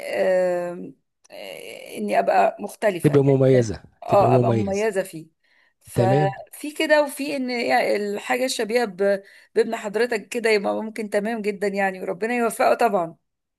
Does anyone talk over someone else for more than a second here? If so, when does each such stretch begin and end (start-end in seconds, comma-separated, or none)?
3.0-4.9